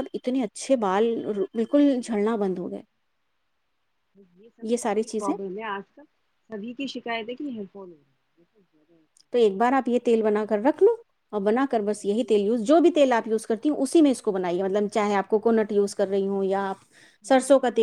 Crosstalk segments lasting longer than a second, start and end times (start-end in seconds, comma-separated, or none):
none